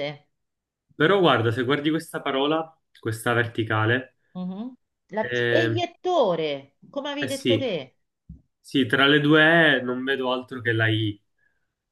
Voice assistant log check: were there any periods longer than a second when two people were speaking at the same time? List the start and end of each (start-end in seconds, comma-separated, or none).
none